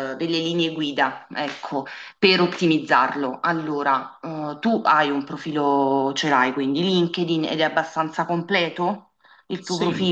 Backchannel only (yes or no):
no